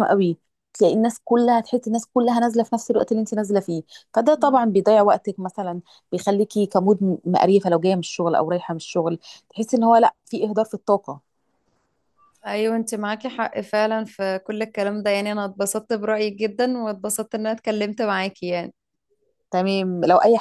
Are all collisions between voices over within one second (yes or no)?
yes